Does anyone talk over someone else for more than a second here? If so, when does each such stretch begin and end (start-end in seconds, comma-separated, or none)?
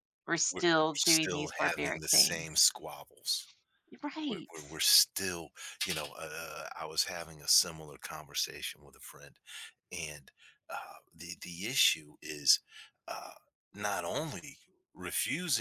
0.5-2.6